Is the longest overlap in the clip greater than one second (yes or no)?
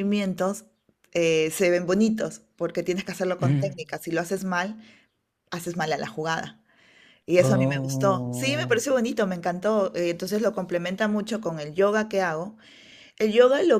yes